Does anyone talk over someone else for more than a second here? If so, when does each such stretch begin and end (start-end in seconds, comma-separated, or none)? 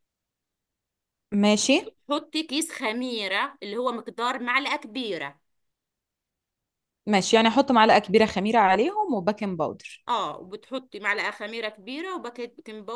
none